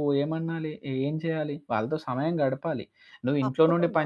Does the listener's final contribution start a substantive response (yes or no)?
no